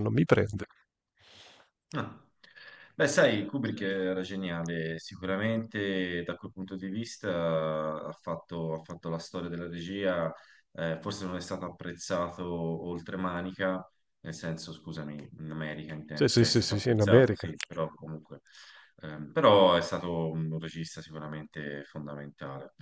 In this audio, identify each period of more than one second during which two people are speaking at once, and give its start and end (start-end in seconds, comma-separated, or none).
16.1-17.5